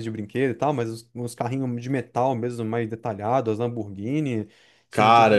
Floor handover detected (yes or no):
yes